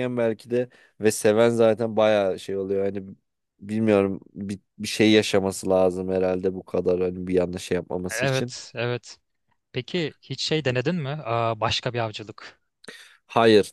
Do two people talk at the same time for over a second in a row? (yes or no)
no